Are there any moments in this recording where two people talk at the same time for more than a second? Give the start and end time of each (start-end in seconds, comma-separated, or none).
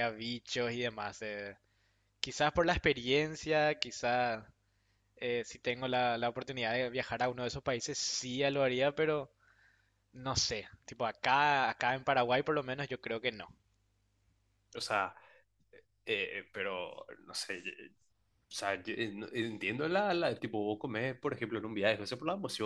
none